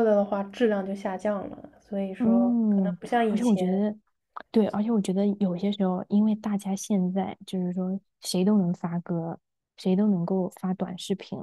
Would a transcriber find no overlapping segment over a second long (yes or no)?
no